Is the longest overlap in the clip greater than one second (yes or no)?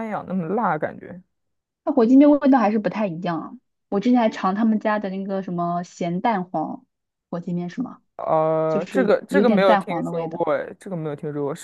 yes